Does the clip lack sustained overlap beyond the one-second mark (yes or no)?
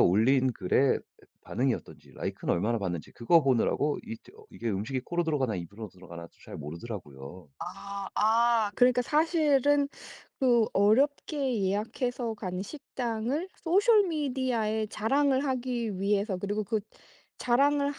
yes